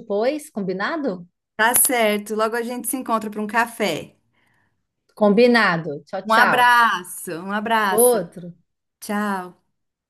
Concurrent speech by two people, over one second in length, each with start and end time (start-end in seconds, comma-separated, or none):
none